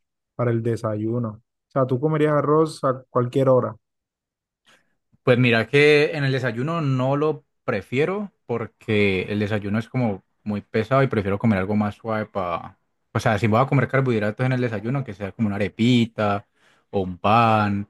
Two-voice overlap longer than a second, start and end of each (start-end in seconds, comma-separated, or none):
none